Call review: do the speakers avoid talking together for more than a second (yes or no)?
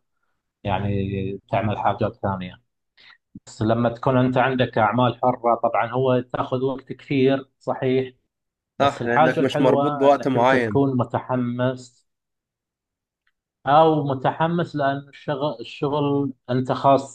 no